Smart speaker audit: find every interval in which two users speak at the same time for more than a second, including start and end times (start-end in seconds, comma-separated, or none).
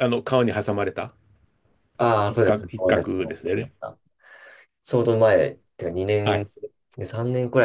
2.3-3.7